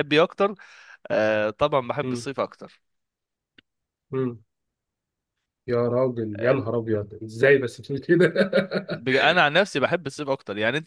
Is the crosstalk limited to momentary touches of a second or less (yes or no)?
yes